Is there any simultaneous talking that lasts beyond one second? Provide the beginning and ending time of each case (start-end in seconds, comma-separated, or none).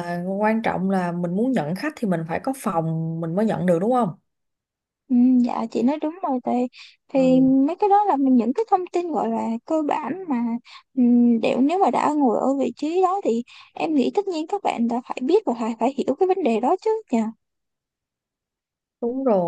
none